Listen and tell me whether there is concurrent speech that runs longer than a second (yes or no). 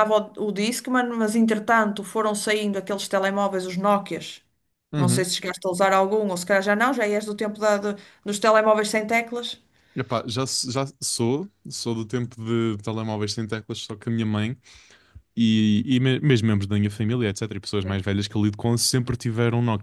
no